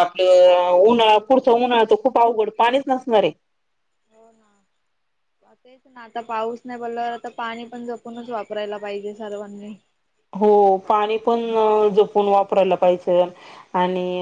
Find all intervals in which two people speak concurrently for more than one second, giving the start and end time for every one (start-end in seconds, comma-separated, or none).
none